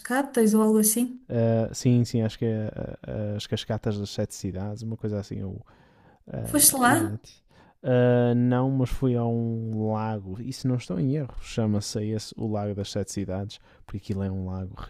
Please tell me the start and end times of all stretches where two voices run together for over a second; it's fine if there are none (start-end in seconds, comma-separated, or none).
none